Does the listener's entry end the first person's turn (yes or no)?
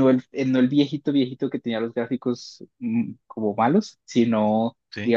no